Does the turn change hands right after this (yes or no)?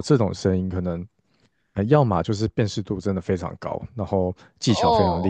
no